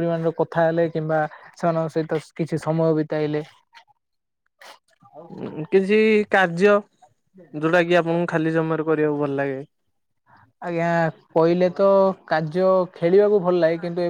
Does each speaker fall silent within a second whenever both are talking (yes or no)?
yes